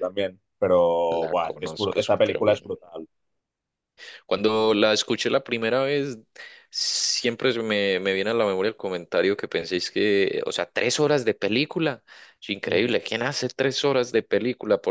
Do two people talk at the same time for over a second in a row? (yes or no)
yes